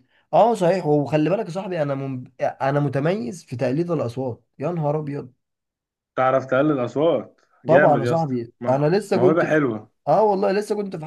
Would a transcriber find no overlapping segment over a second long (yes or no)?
no